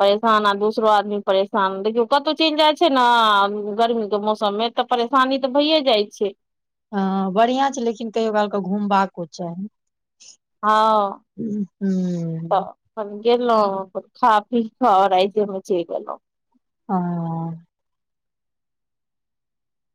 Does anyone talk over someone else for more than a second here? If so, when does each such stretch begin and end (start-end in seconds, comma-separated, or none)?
none